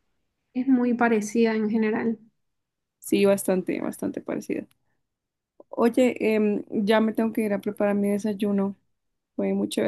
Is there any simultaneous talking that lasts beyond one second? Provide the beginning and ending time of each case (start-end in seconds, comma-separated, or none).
none